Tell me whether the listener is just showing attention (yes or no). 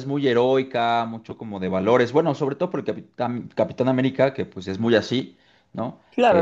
no